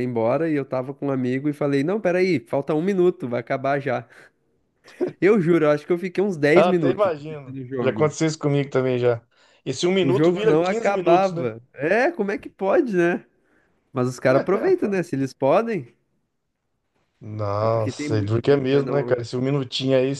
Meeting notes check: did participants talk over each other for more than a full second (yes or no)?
yes